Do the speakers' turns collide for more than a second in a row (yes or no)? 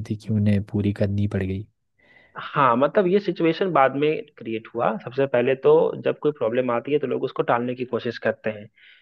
no